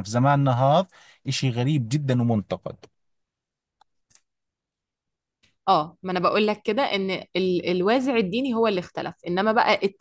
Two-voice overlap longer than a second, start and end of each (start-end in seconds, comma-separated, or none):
none